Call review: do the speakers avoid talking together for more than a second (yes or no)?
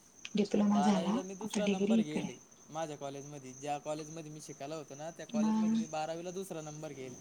no